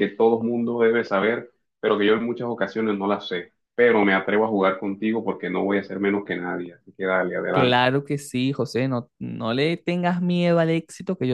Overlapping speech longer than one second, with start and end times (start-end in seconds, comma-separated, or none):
none